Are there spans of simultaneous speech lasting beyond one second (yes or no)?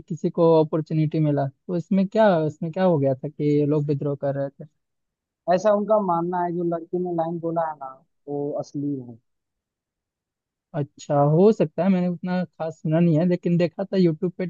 no